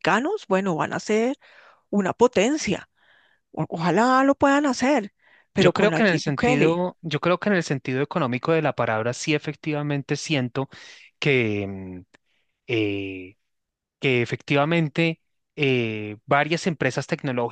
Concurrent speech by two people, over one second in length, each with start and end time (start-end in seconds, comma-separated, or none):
5.6-6.8